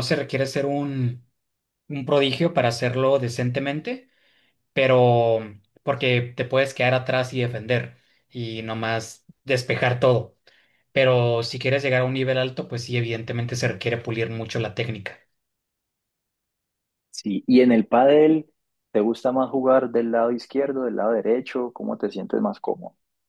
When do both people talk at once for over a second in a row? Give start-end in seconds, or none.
none